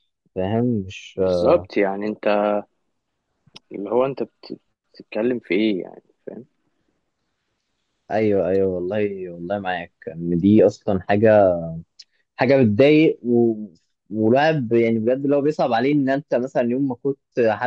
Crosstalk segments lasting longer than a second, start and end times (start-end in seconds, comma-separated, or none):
none